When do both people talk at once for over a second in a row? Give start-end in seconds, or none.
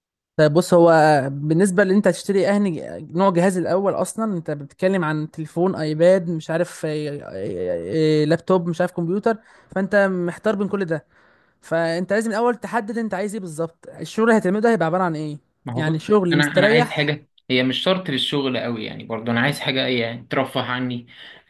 15.7-17.2